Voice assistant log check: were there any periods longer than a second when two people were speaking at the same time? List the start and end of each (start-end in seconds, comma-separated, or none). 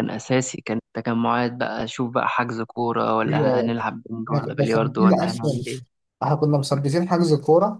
4.3-5.6